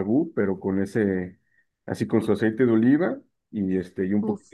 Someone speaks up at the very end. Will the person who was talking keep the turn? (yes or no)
yes